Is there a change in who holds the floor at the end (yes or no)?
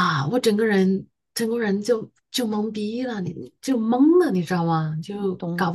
no